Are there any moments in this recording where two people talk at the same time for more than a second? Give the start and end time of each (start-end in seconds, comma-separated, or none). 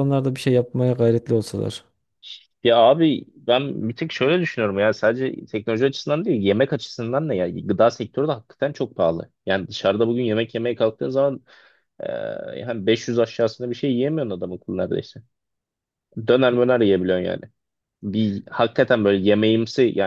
none